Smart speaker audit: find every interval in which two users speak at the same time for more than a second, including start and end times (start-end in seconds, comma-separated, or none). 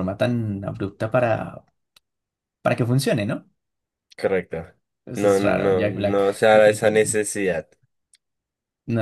5.2-7.2